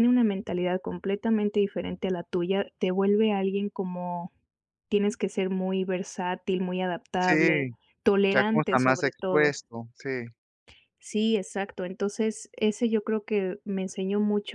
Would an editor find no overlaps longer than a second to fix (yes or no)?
no